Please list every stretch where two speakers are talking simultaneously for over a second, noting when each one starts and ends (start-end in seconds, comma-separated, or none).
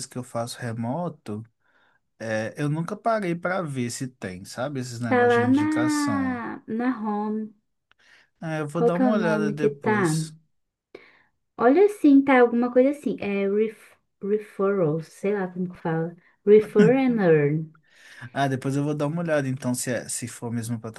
5.1-6.4, 8.7-10.0